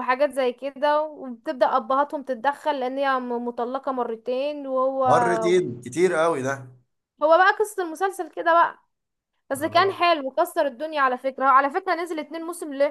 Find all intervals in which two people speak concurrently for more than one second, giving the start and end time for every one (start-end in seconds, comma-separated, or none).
none